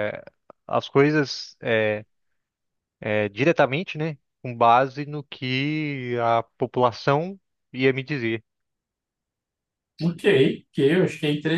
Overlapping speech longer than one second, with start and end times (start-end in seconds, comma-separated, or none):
none